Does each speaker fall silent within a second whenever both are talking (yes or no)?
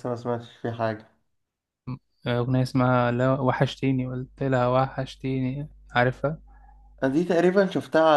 yes